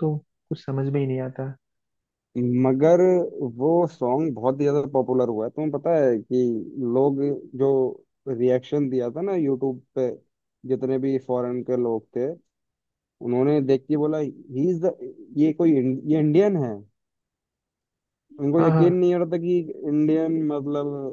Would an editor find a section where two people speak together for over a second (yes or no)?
no